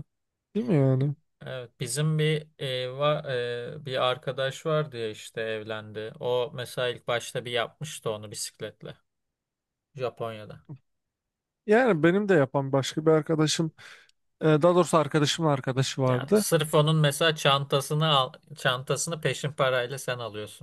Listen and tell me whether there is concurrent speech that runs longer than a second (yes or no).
no